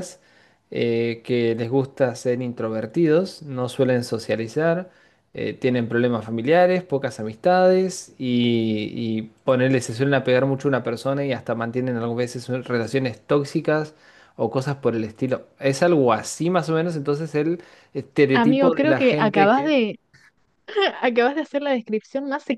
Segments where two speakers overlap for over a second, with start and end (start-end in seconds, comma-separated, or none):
18.3-19.8